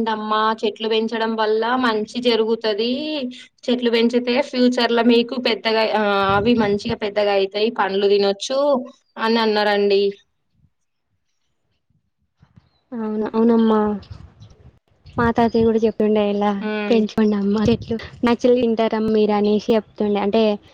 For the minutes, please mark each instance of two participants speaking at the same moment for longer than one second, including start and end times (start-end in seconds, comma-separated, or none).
none